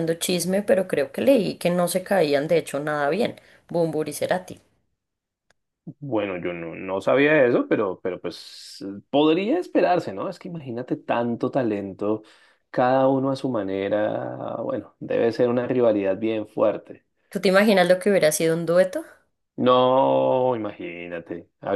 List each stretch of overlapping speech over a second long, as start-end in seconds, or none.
none